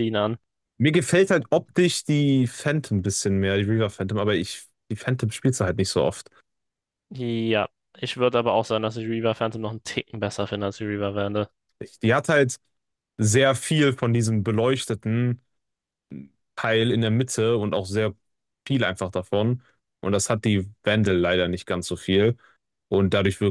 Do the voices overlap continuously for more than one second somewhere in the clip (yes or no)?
no